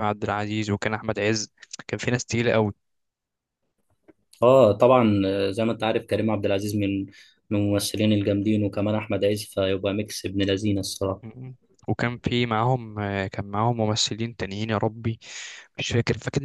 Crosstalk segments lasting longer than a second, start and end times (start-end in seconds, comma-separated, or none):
none